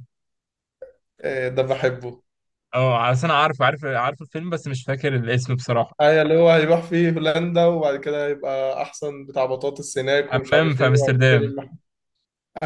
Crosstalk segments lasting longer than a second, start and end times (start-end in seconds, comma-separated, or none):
10.2-11.5